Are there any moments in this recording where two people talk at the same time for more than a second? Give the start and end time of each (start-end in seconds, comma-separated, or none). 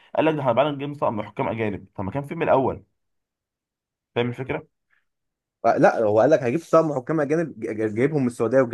none